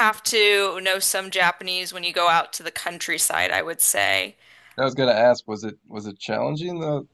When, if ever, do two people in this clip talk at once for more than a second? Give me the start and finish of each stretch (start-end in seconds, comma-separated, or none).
none